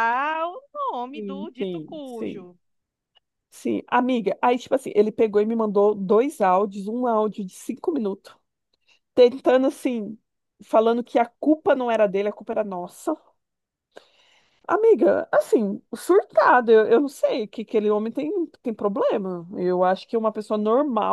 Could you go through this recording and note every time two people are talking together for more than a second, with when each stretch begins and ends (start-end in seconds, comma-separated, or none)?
1.1-2.5